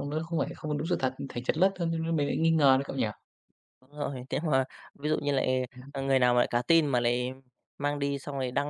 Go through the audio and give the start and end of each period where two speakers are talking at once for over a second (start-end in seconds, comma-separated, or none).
none